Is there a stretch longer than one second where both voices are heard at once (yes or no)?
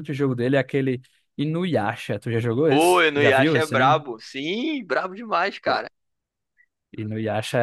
yes